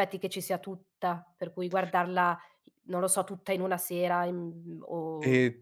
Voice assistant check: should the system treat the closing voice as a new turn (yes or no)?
yes